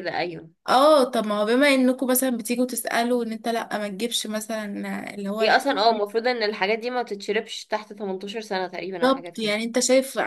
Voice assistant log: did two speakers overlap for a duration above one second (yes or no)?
no